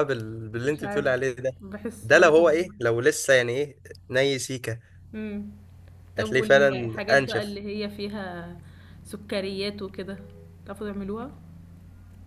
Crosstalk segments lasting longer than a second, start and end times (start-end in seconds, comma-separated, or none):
6.2-7.6